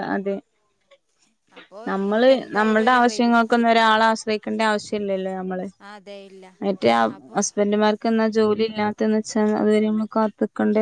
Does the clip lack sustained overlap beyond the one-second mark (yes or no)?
no